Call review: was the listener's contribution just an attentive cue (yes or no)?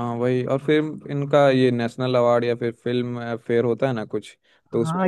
no